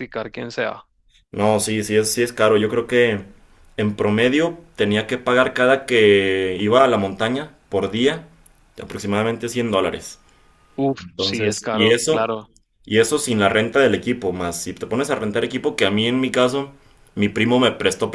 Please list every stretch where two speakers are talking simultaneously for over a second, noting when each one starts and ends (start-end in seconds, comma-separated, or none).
11.0-12.3